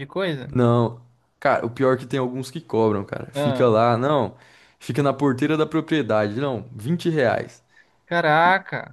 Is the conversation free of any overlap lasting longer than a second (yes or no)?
yes